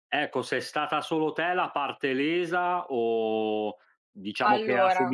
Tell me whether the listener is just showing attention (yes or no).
yes